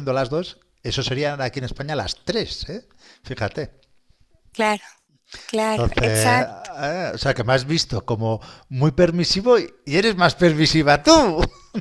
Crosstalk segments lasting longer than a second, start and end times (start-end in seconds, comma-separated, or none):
none